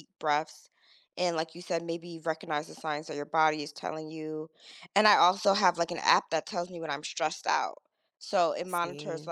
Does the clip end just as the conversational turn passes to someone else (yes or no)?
no